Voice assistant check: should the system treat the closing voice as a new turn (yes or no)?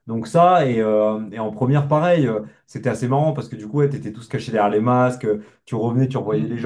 no